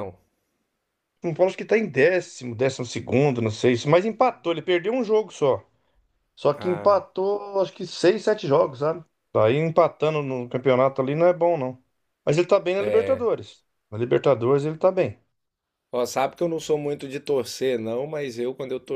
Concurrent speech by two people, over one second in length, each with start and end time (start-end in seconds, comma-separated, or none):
none